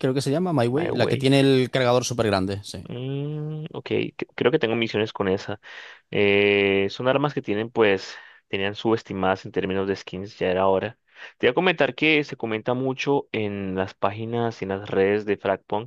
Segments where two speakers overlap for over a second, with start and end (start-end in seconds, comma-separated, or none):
none